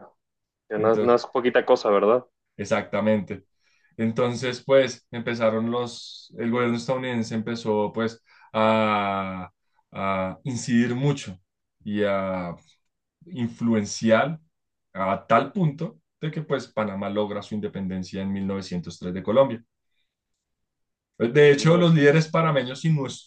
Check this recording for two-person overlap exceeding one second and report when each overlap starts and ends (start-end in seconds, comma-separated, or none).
21.4-22.8